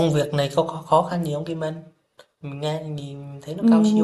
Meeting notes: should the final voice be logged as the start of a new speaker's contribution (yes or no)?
yes